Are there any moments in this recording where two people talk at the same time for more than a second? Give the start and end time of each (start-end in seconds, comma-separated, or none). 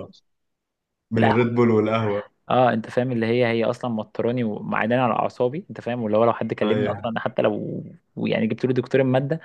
none